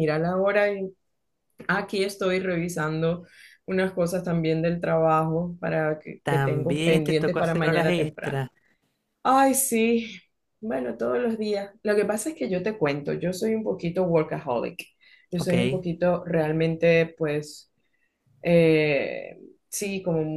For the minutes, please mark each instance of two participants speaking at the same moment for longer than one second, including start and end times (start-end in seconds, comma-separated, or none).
6.2-8.4